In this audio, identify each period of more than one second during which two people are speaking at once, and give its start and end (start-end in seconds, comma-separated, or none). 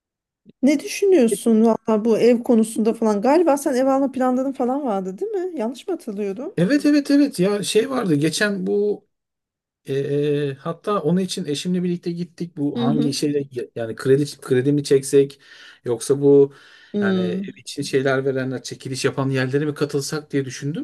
none